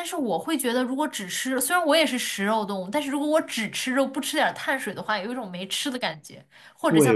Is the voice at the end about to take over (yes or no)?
yes